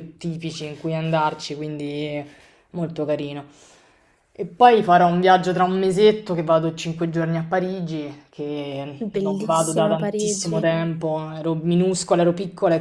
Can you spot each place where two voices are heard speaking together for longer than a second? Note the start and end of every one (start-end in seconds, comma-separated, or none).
9.0-10.7